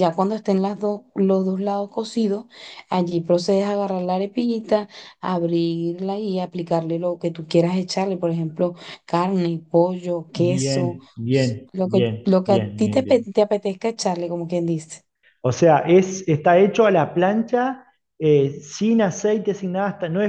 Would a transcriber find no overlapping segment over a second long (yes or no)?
no